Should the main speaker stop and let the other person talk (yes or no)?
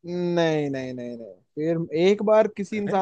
no